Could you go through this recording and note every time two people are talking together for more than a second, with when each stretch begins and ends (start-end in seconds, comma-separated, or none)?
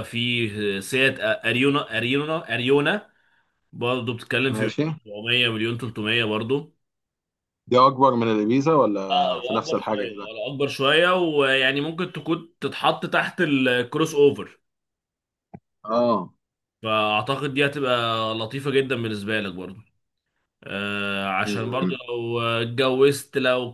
9.1-10.3